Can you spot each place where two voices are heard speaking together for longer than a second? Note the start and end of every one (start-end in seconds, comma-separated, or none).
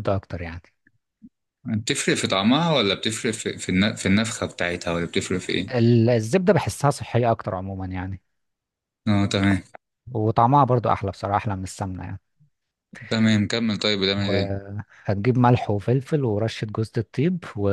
none